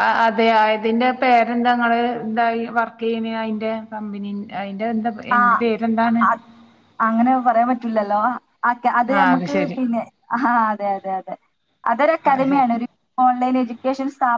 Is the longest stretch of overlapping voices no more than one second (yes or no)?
yes